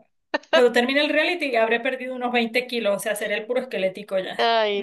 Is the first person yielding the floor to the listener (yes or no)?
yes